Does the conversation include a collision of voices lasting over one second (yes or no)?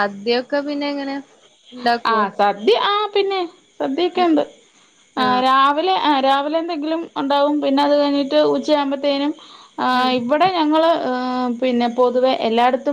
no